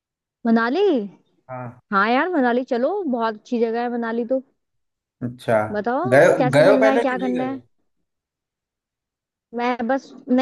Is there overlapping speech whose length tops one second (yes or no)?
yes